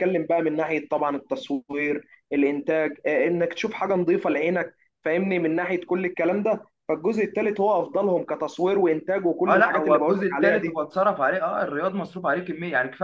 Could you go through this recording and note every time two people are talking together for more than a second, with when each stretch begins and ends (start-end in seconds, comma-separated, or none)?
9.5-10.8